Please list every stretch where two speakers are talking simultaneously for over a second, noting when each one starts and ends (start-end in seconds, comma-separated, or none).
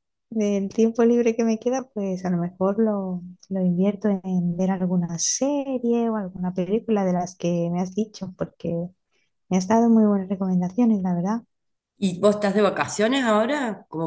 none